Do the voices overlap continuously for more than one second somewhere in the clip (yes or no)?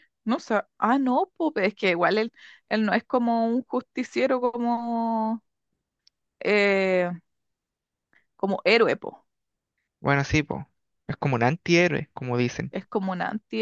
no